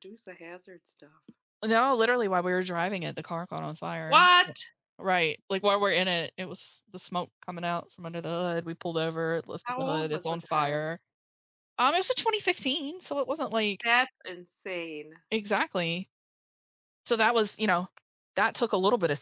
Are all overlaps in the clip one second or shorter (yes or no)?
no